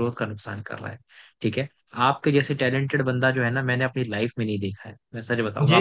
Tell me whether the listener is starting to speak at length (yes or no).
no